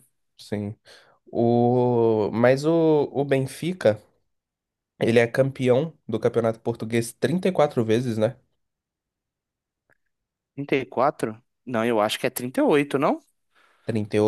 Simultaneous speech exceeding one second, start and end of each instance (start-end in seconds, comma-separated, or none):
none